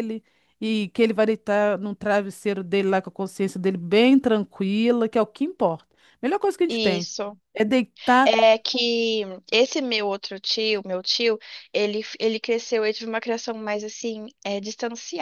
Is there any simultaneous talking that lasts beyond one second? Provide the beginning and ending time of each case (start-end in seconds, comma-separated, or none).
none